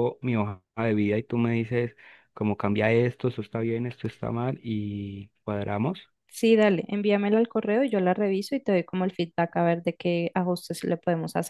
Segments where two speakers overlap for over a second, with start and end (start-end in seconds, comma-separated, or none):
none